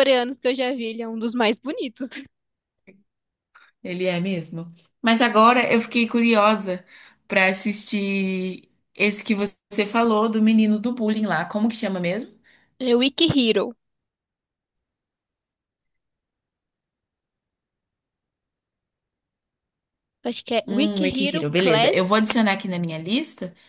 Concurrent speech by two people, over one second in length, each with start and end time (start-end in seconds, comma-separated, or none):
20.7-22.3